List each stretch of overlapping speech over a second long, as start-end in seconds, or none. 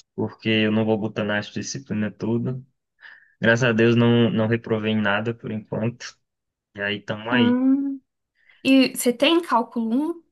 none